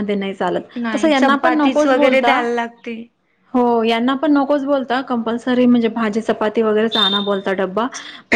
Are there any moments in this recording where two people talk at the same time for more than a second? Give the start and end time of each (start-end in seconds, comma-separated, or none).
0.8-2.4